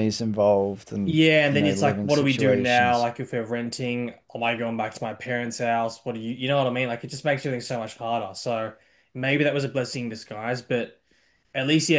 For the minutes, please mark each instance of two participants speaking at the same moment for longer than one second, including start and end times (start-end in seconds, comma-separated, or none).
1.0-3.1